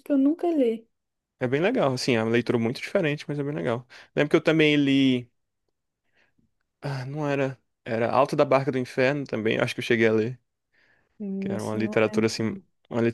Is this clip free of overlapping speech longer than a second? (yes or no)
no